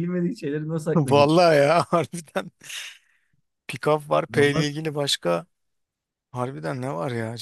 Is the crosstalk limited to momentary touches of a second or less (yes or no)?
yes